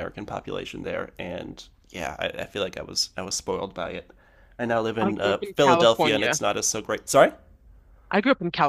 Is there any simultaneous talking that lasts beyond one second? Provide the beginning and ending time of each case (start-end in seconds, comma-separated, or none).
5.0-6.4